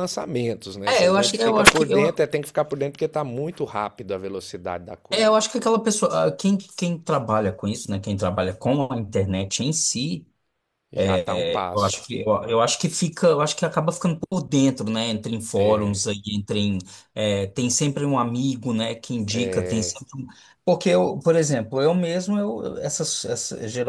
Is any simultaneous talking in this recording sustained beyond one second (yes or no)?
yes